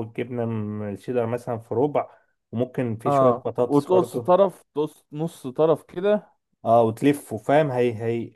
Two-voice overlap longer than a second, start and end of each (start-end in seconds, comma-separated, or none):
3.0-4.3